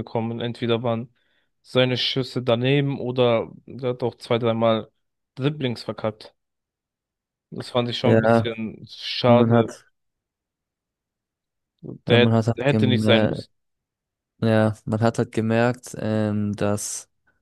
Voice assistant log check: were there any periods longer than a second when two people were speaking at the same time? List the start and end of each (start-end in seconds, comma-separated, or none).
12.1-13.5